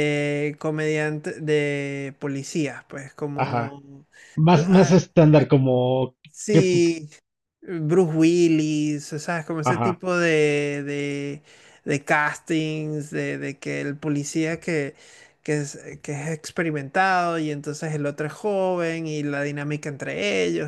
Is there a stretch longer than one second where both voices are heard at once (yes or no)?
no